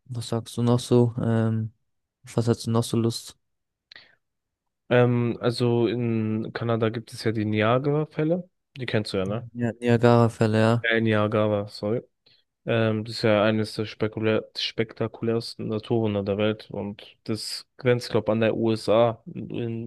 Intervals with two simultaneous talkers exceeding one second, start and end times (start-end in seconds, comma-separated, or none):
none